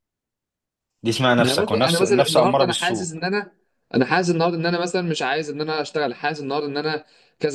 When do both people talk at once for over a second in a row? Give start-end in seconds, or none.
1.4-3.1